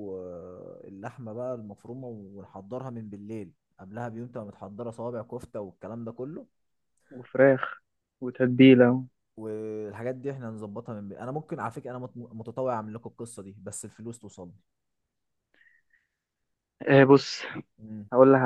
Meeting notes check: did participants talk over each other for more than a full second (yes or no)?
no